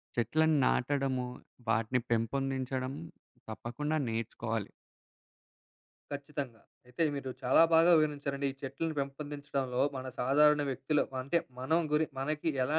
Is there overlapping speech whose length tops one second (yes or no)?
no